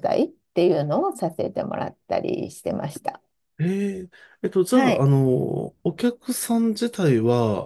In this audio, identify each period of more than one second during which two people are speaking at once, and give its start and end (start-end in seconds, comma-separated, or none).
none